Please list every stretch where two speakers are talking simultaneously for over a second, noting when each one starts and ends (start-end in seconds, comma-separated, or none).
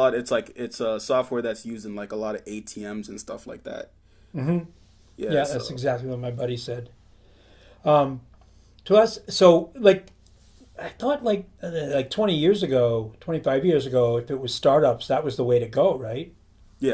none